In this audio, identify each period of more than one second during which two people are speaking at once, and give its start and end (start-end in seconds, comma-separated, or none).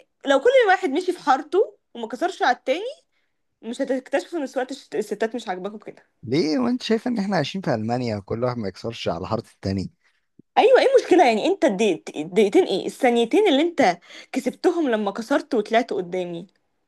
none